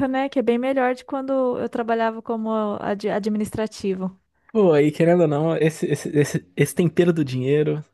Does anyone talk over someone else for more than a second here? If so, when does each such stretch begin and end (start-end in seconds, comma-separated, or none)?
none